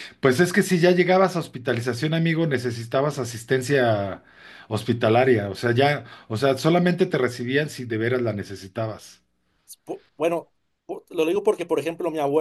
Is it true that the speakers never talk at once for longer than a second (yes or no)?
yes